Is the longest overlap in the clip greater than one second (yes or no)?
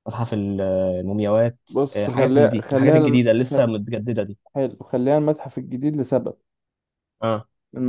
yes